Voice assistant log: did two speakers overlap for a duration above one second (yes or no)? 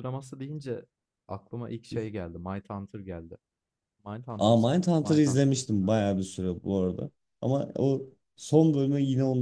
yes